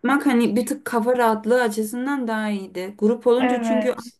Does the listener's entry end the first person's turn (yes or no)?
no